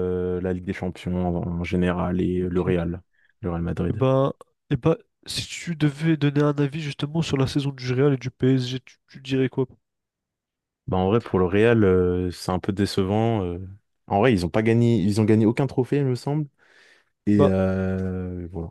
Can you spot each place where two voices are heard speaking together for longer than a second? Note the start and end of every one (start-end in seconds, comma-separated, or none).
none